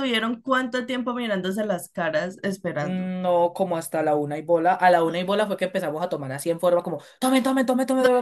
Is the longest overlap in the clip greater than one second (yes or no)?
no